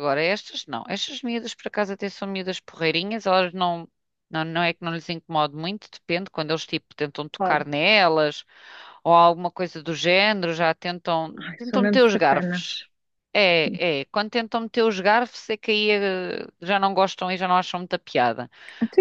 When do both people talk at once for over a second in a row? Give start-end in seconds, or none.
11.4-12.8